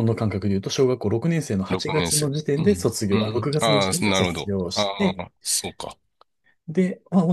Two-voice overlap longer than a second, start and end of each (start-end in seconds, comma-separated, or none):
1.7-5.3